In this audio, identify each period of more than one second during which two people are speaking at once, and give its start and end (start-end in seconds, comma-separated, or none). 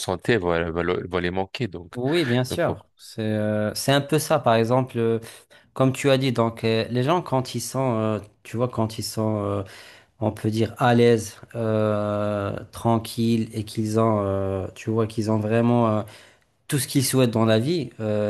none